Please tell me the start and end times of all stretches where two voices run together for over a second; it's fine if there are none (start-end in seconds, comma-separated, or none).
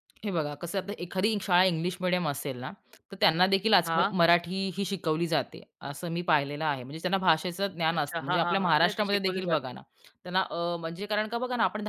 8.0-9.7